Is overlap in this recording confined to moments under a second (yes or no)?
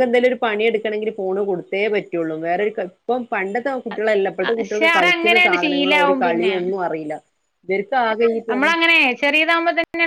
no